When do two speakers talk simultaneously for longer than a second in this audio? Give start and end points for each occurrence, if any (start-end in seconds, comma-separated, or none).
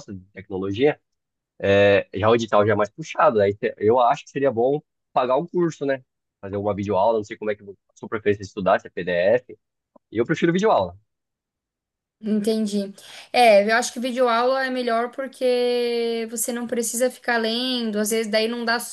none